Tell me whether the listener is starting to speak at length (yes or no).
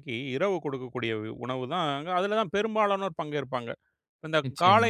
no